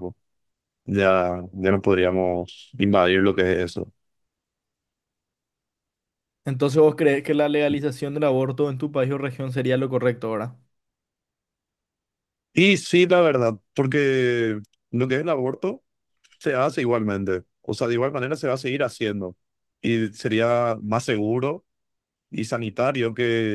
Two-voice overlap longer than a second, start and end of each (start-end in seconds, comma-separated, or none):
none